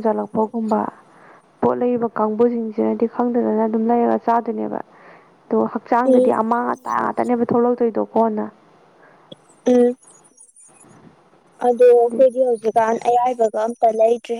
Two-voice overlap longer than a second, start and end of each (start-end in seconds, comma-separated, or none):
none